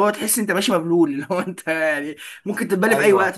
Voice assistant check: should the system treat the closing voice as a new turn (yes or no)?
yes